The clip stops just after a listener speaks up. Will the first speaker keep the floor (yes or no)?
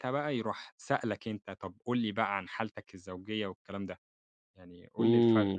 no